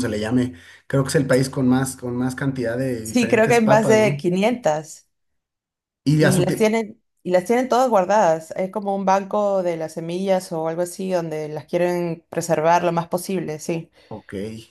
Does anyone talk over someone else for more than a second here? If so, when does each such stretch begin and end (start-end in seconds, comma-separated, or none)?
3.0-4.2